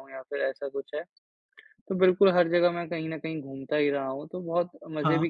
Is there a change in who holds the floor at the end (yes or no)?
no